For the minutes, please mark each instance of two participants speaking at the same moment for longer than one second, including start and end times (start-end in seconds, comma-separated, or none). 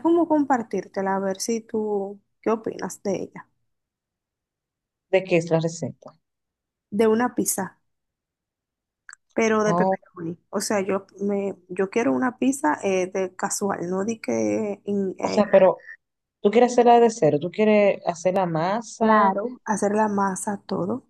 none